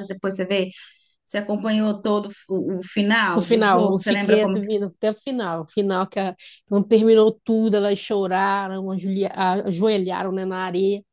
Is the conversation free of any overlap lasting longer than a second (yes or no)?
no